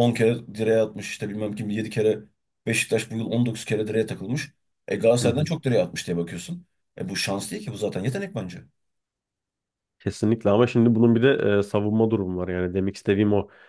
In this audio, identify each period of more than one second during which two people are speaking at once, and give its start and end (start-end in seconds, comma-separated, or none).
none